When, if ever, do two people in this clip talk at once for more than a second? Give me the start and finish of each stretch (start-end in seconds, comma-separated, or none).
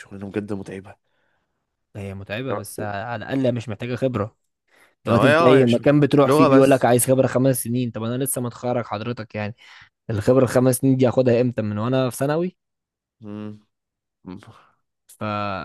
5.1-6.9